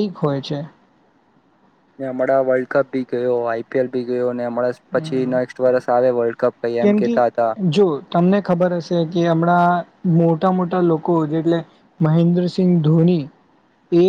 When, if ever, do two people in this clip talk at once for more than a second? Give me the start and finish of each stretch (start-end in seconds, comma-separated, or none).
none